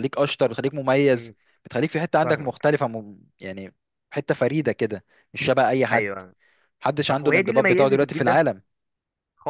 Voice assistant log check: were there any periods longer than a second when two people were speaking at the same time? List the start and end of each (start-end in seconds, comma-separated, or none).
7.1-8.4